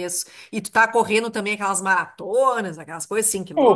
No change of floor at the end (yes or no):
no